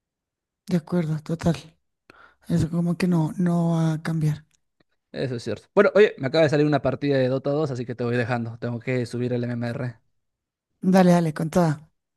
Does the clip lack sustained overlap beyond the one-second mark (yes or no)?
yes